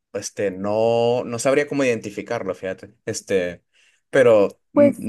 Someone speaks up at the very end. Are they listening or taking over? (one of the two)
listening